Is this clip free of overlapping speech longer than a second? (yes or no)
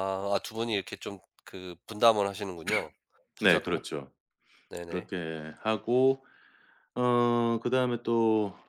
yes